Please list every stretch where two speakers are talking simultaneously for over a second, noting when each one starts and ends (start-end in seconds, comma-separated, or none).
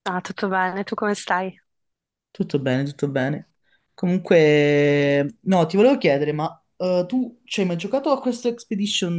none